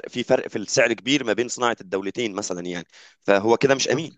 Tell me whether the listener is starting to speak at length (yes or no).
no